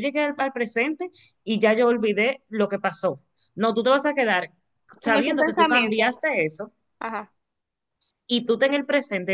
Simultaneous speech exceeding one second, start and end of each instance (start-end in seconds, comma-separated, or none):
5.0-6.2